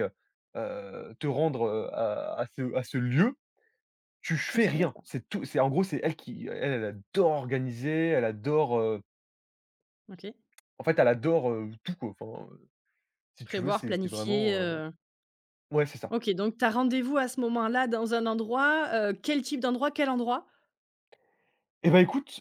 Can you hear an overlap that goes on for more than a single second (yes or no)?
yes